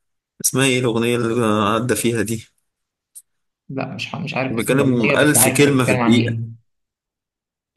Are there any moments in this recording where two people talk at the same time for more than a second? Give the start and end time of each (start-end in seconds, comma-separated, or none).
4.5-6.3